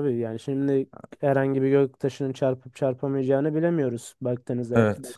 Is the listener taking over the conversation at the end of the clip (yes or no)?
yes